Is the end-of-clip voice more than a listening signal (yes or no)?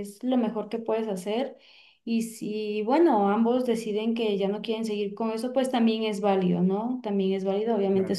no